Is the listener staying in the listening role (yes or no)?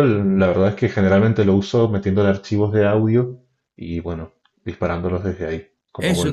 no